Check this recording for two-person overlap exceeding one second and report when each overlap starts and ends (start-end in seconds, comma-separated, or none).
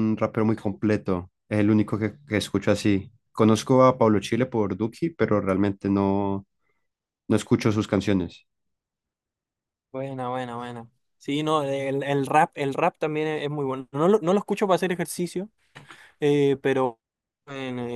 none